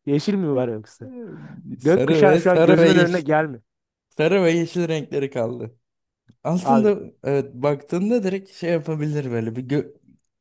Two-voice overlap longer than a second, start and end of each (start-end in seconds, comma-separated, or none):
1.8-3.2